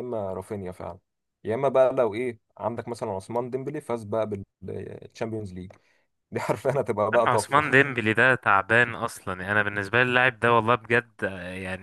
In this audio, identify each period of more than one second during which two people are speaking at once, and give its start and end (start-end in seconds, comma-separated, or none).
none